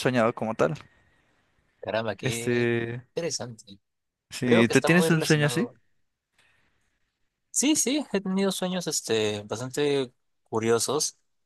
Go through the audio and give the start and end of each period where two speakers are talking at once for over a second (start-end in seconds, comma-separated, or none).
4.4-5.7